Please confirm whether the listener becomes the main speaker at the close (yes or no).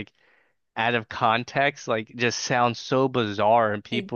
no